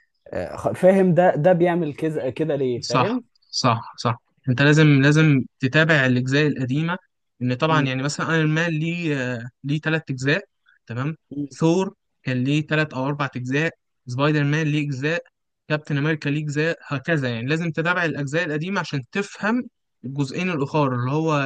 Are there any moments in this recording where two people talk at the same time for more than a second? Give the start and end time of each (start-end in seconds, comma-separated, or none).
none